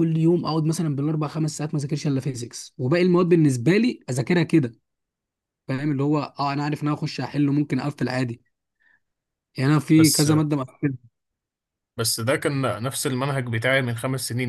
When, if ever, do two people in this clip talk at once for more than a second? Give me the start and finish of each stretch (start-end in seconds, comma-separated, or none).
none